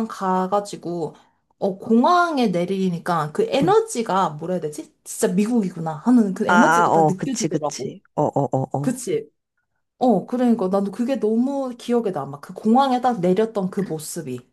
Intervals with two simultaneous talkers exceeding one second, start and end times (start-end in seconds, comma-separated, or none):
6.5-7.9